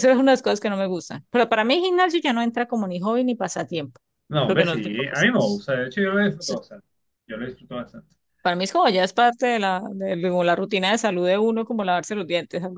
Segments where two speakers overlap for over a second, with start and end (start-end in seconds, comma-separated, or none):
4.5-5.7